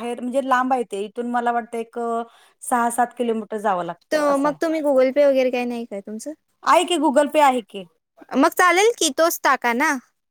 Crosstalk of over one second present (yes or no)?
no